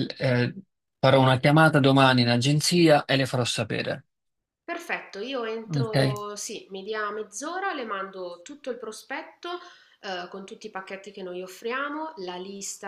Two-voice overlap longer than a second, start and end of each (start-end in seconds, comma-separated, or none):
none